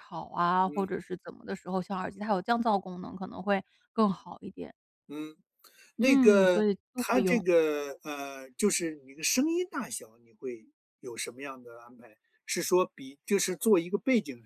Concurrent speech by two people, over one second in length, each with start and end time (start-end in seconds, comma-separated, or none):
6.0-7.4